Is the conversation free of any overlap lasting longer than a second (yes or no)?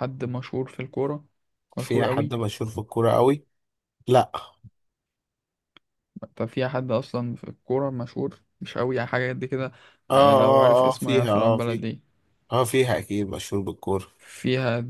no